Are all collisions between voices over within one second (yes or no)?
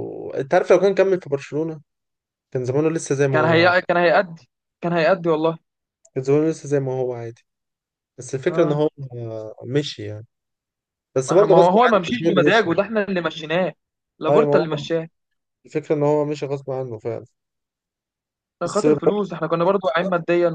no